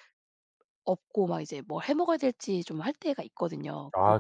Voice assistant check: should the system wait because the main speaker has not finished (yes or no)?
yes